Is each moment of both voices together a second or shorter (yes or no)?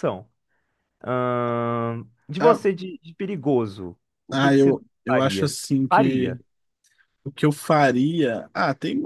no